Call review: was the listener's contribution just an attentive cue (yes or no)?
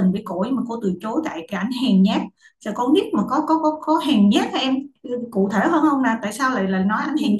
no